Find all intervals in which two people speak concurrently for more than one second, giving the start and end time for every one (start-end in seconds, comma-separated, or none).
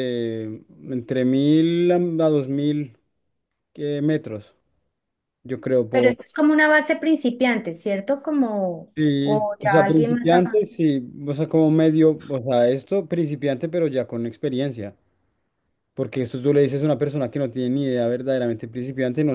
8.9-10.6